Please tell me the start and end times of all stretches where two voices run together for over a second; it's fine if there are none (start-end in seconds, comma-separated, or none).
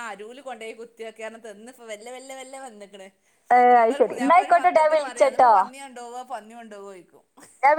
3.8-5.5